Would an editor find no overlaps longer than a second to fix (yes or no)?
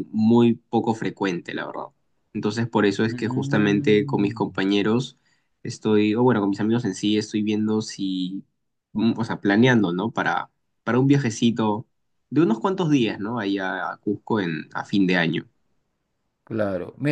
no